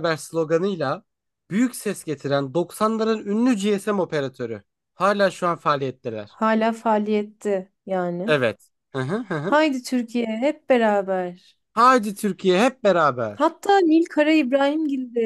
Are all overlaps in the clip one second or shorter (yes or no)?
yes